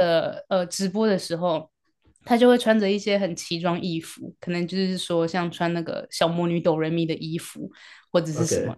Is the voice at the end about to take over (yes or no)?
no